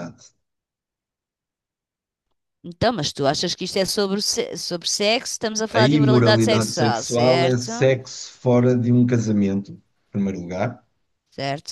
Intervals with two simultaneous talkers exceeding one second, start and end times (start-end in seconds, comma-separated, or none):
5.7-7.7